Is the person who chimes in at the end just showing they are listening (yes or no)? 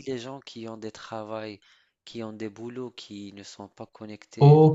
no